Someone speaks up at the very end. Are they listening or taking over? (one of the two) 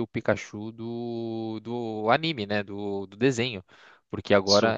listening